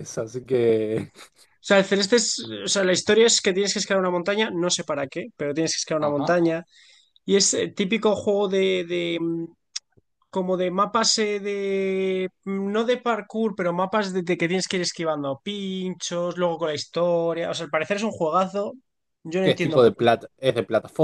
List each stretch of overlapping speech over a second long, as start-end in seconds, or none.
none